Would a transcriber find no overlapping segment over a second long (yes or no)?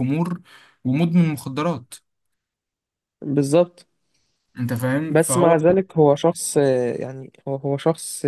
yes